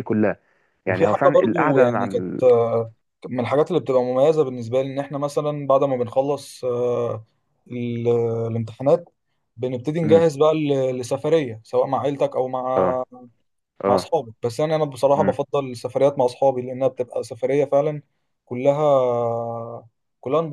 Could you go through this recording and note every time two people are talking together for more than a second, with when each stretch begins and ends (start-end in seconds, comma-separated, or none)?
0.9-2.4